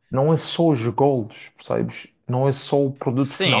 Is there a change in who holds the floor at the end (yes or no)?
yes